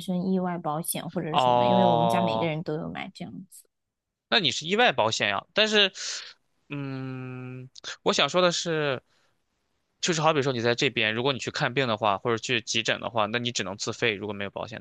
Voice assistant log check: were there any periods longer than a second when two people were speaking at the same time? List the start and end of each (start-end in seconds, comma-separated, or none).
1.3-2.5